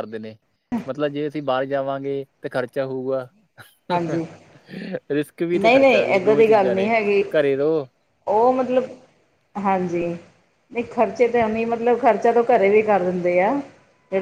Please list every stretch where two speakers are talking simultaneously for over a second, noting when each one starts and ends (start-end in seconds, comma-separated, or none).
5.5-6.9